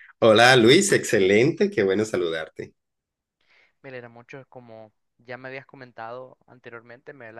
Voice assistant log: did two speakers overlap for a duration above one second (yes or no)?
no